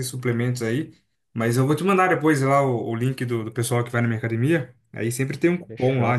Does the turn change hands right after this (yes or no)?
no